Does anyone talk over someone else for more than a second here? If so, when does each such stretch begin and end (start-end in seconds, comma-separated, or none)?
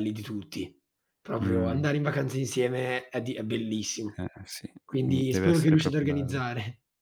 4.8-6.4